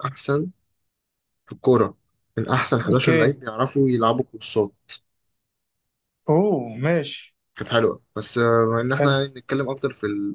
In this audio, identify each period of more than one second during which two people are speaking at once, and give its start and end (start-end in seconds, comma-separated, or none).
none